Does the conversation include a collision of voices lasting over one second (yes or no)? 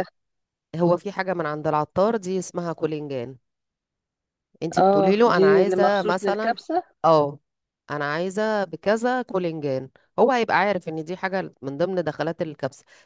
yes